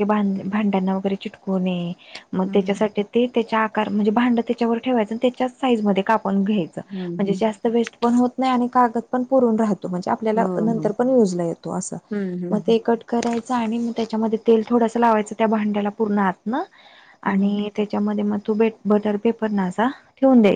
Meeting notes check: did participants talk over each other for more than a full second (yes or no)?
no